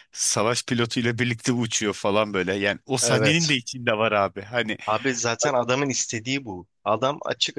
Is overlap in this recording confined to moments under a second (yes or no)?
yes